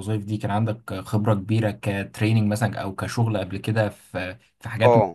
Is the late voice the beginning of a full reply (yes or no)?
yes